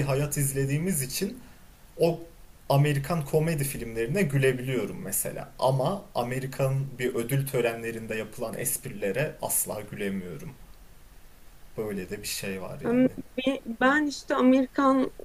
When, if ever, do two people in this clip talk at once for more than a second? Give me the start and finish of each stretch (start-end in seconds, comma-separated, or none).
none